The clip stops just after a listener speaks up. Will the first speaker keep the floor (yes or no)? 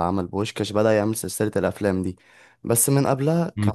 no